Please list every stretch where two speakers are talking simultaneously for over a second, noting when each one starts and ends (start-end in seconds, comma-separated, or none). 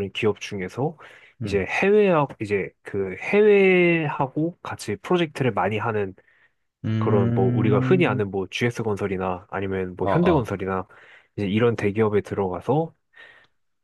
7.0-8.2